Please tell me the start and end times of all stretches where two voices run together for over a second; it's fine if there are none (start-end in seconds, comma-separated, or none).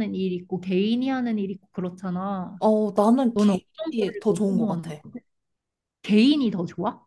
3.3-5.0